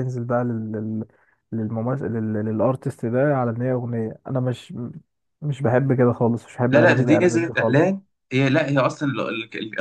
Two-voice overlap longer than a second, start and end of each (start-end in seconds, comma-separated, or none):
6.7-7.9